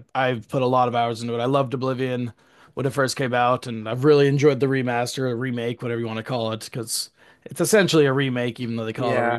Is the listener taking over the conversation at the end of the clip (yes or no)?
yes